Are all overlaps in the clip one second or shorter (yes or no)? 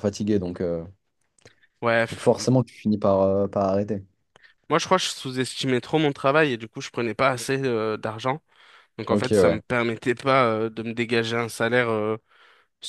yes